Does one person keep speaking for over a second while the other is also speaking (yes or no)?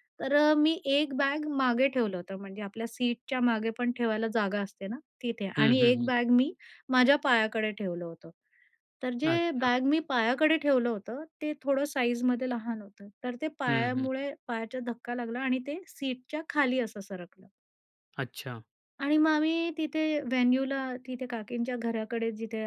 no